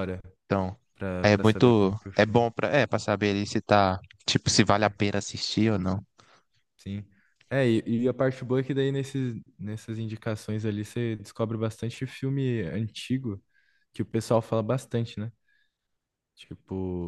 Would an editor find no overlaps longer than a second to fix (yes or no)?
no